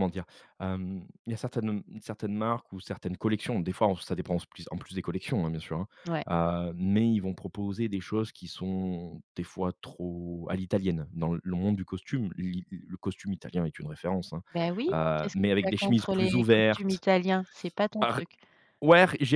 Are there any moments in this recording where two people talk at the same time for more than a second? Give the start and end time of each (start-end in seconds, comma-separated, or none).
14.9-17.0